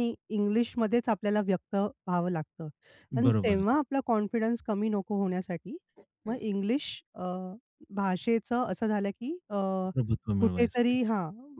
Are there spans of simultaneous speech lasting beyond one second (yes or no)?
no